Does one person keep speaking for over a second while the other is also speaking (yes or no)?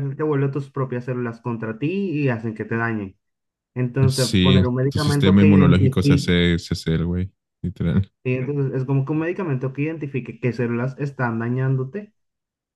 yes